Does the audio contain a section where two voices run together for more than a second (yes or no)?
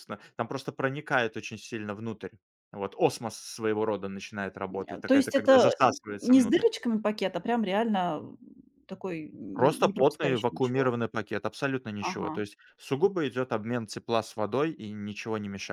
yes